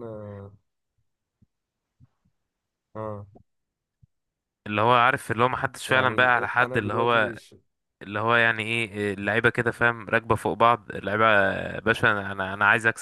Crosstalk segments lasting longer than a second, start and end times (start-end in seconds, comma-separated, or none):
5.9-7.3